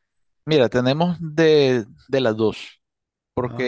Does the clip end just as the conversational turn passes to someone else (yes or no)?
no